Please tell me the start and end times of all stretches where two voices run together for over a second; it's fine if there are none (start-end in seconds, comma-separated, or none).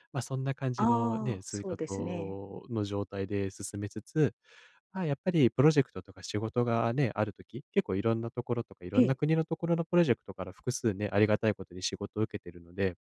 0.8-2.4